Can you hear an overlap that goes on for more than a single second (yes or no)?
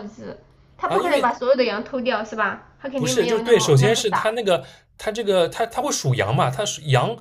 yes